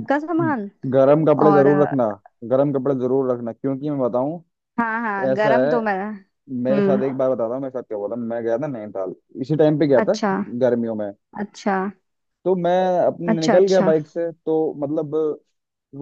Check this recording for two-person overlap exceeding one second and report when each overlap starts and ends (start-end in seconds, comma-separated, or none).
none